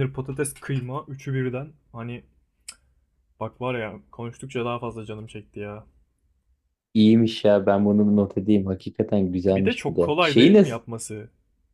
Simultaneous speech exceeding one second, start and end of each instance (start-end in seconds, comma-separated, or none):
9.5-10.8